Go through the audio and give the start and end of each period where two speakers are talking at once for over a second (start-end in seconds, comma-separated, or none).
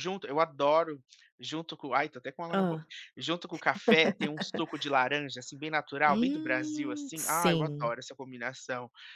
6.1-7.9